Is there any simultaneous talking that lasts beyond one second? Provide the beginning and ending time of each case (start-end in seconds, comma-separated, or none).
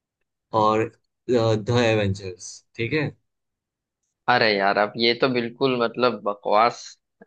none